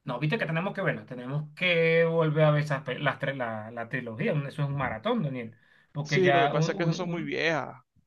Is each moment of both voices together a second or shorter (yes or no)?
no